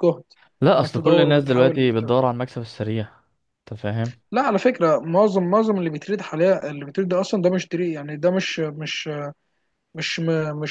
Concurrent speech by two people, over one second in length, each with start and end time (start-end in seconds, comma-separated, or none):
0.7-2.0